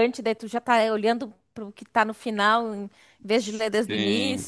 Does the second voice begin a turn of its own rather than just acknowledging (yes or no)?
yes